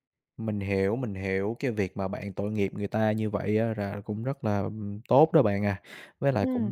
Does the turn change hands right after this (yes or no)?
no